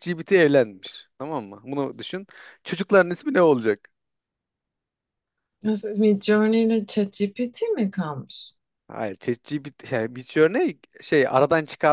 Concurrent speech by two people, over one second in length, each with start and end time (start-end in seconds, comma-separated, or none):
none